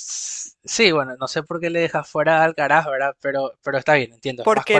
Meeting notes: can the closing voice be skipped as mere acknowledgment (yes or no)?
no